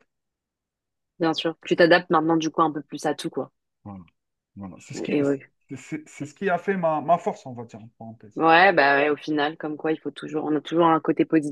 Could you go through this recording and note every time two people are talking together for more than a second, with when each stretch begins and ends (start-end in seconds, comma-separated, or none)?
none